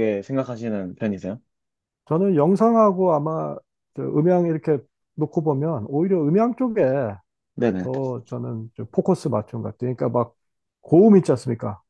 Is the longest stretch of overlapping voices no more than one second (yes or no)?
yes